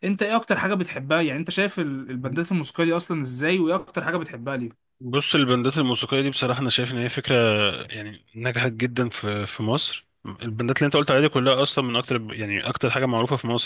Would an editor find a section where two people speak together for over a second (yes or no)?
no